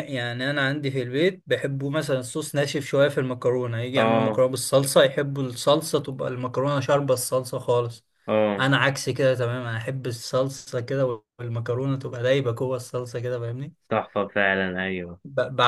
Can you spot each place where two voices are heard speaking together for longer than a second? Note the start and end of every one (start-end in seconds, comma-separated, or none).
none